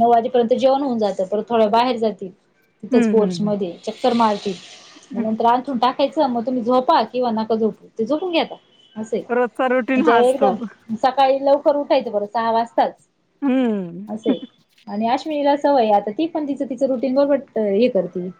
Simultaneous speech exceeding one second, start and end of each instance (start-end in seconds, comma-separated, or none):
none